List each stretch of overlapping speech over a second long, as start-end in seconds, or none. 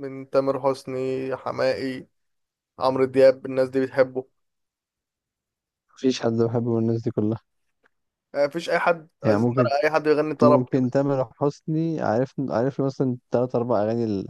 none